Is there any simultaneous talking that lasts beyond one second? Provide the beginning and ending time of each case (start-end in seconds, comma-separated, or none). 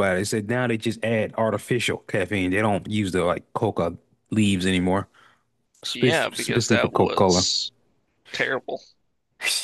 5.9-7.4